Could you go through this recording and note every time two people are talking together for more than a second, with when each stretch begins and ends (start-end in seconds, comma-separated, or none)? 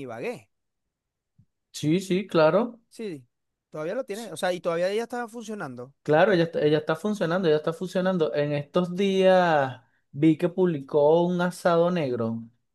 none